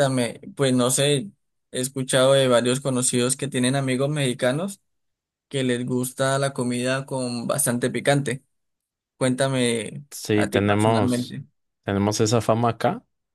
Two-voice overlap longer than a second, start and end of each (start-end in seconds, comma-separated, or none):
10.1-11.4